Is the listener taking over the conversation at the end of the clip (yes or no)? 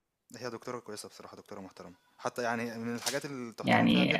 yes